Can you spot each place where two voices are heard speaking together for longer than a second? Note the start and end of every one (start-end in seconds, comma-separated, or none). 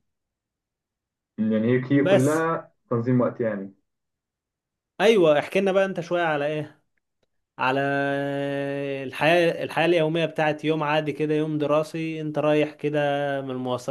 none